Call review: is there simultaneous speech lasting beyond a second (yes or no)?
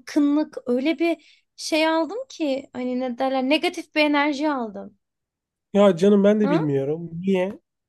no